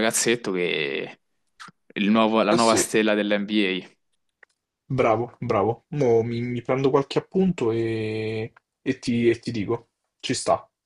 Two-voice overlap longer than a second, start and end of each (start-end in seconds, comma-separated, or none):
none